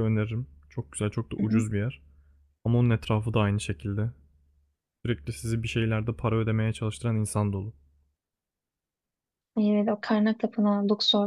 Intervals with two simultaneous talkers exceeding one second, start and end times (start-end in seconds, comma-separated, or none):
none